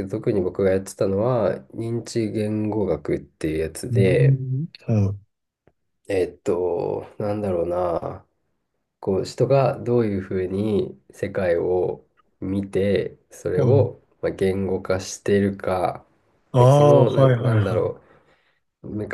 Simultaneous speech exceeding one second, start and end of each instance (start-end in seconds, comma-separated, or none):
16.6-17.9